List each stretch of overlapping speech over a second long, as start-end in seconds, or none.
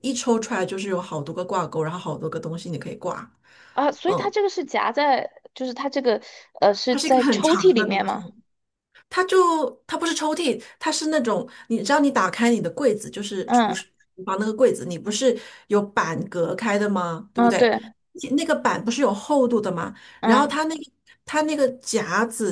6.9-8.2